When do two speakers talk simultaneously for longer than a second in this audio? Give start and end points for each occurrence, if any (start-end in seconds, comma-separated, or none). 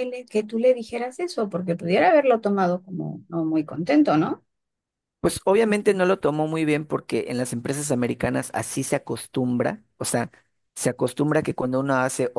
none